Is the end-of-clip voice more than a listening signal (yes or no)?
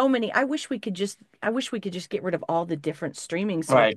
yes